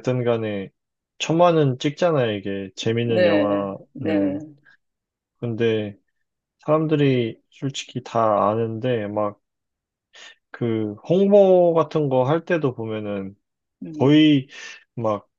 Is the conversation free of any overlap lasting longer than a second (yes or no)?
no